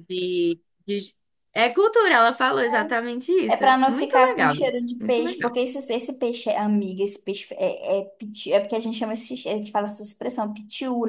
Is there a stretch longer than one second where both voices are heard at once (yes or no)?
yes